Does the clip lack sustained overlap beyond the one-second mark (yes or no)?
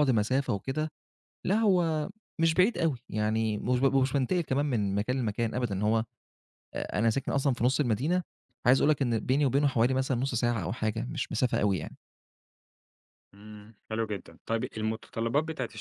yes